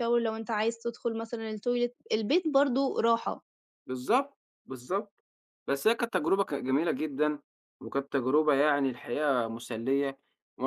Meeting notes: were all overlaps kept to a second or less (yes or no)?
yes